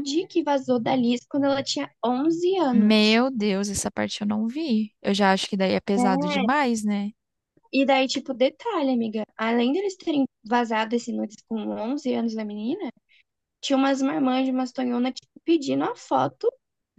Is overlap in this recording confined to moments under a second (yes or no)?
yes